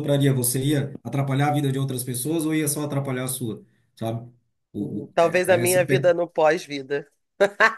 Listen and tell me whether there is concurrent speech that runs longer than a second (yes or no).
yes